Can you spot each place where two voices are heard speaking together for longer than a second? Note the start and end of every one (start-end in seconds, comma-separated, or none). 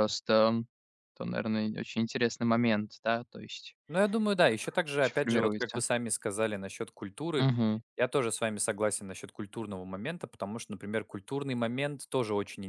4.5-5.8